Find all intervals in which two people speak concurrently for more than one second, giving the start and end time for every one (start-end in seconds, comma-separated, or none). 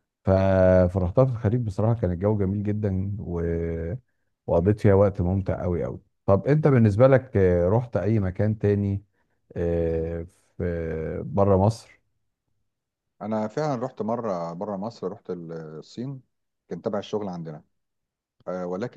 none